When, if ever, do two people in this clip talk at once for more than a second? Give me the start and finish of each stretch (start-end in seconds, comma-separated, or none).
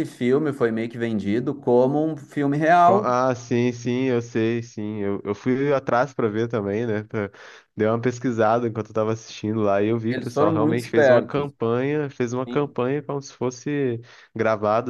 10.1-11.5